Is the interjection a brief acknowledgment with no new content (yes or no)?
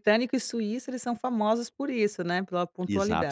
no